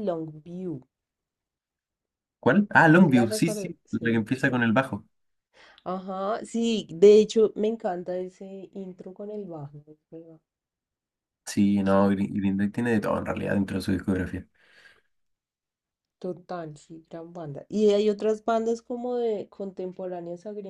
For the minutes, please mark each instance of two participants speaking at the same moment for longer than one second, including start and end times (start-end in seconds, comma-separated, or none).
3.0-4.3